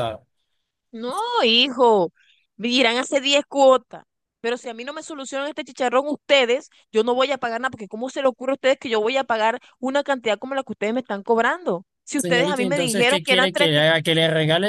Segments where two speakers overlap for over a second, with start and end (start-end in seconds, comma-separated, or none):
12.2-13.8